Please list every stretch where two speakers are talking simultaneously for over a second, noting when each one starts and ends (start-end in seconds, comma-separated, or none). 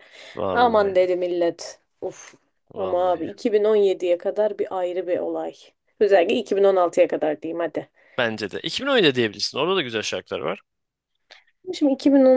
none